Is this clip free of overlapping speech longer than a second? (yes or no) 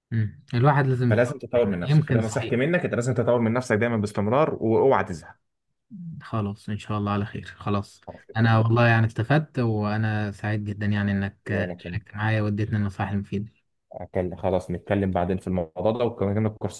no